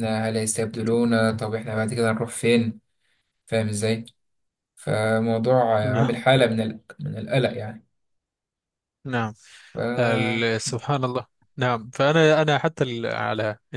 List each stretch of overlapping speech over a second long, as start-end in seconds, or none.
none